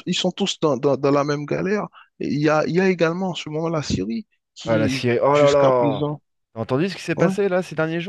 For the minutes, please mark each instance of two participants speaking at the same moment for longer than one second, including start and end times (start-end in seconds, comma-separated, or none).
4.7-6.0